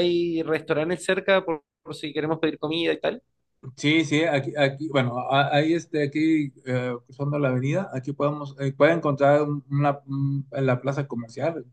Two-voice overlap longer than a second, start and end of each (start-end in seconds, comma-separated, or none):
none